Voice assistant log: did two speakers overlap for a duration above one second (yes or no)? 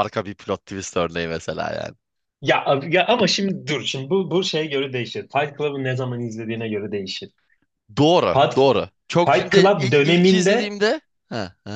yes